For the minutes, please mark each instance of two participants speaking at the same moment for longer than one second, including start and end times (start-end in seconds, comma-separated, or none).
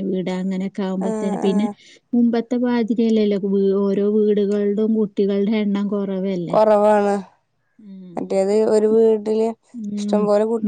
none